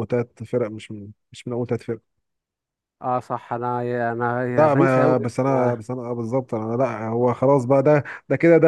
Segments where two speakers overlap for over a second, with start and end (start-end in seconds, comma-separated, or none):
4.5-5.8